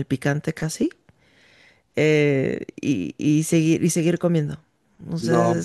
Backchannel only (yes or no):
no